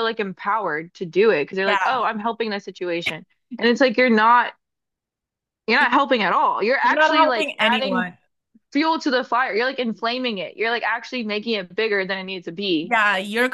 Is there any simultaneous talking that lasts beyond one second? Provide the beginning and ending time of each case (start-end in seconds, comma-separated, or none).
6.8-8.1